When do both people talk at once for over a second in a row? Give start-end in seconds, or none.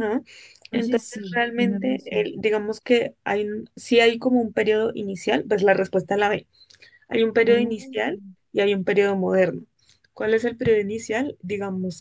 0.7-2.3